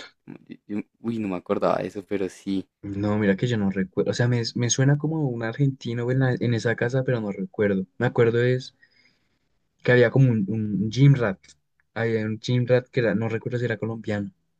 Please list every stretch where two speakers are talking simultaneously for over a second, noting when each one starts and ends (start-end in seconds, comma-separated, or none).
none